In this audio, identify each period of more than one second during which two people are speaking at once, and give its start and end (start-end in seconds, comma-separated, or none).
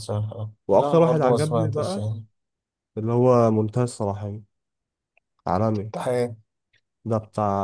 0.7-2.0